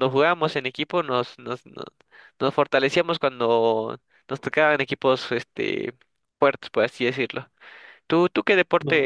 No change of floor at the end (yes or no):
yes